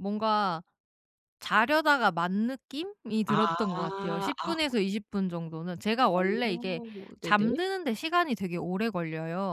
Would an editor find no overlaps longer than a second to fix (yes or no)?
no